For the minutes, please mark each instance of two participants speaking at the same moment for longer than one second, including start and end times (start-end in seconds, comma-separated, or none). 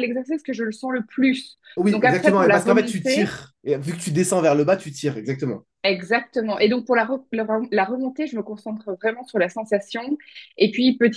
1.8-3.3